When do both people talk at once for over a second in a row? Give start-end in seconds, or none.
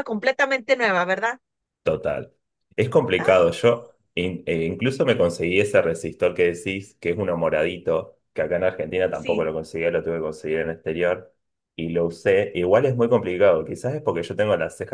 none